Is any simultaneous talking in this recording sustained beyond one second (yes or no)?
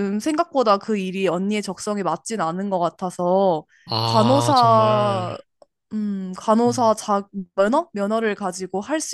yes